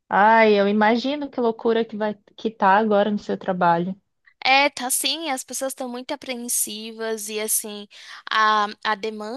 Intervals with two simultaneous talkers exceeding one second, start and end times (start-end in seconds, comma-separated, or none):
none